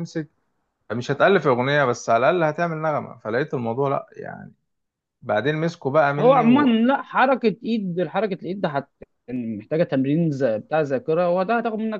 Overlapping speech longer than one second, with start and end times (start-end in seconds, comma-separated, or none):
none